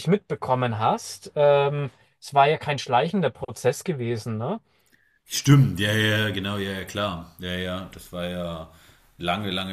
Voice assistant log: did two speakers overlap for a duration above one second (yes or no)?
no